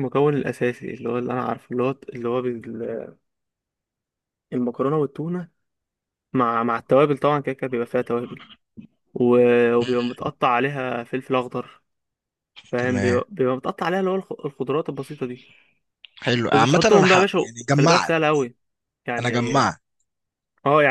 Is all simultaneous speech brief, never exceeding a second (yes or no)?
no